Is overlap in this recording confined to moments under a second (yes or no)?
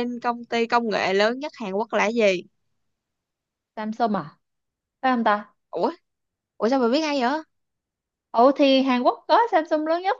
yes